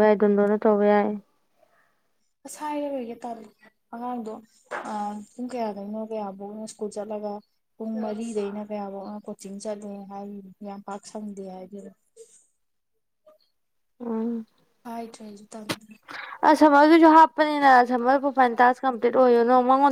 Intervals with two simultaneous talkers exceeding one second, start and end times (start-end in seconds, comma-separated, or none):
none